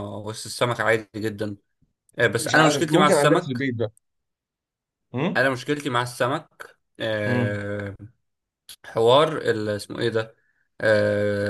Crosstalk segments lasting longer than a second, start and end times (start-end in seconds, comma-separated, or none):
2.4-3.7